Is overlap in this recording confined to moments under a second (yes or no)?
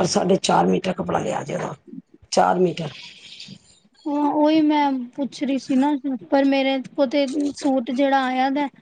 yes